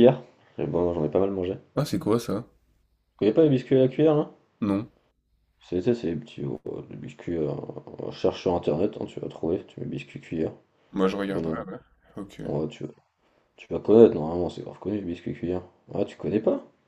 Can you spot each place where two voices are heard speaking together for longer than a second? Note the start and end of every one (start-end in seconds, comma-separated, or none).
none